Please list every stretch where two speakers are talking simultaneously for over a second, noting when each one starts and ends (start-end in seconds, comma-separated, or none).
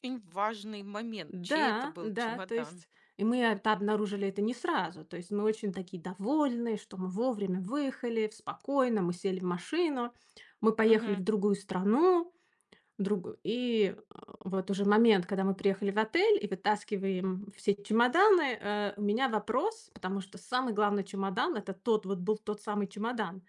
1.3-2.9